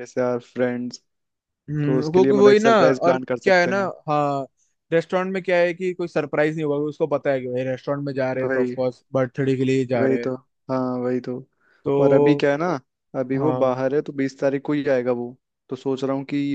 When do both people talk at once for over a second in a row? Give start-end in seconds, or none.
1.8-3.9